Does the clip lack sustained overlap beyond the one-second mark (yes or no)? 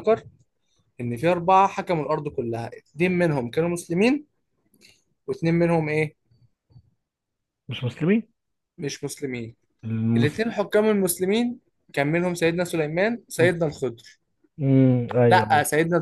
yes